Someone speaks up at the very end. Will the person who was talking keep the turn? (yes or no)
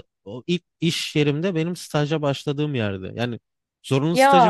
yes